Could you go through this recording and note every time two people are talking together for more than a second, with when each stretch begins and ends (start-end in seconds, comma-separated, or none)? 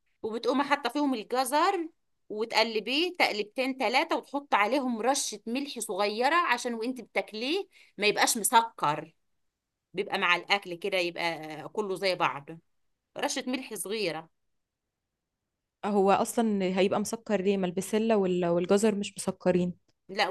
none